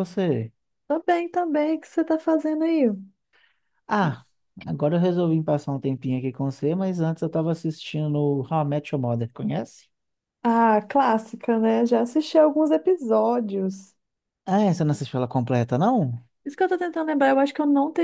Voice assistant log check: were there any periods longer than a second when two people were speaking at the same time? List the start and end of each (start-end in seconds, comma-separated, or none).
none